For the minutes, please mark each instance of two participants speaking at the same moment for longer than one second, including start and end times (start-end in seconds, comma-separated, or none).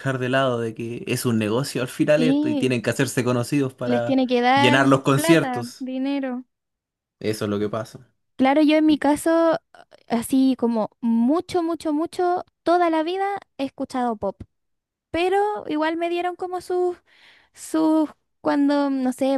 3.9-5.9